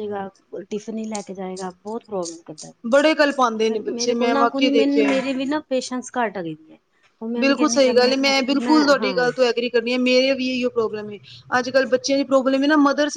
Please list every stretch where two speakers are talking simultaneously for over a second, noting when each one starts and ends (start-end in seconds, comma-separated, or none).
3.7-5.2